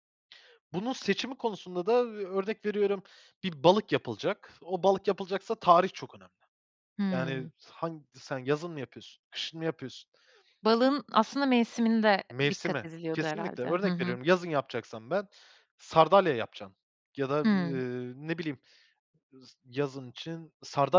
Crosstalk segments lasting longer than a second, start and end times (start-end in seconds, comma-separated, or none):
12.3-14.2